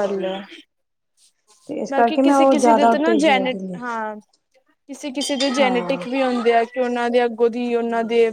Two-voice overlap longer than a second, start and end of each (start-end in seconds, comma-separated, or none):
1.9-3.8